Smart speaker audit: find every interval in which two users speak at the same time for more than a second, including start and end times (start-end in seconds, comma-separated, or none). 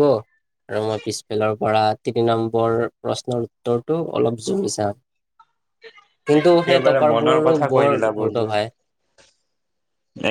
6.4-8.6